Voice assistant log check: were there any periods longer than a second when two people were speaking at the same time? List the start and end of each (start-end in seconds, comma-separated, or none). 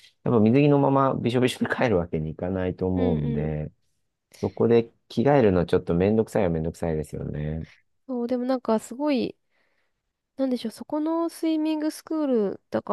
none